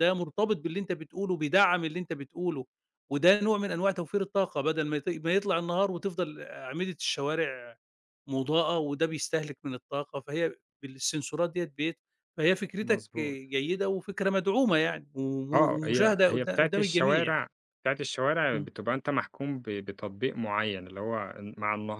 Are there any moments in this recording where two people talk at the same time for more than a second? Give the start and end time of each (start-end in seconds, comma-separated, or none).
15.5-17.4